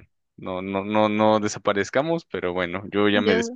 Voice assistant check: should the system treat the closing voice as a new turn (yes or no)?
no